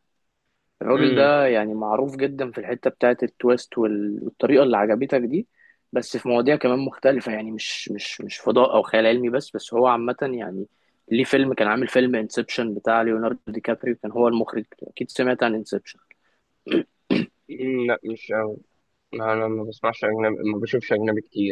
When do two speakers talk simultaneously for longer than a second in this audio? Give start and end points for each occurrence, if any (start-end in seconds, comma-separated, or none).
none